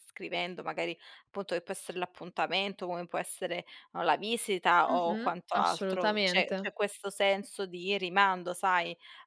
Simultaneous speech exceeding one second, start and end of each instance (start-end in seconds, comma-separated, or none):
4.9-6.7